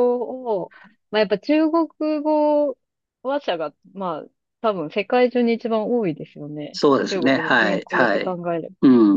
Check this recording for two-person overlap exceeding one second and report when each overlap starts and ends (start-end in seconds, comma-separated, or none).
6.7-8.4